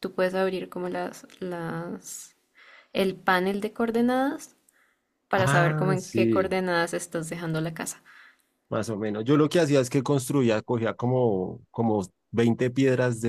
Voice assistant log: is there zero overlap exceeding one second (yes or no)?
no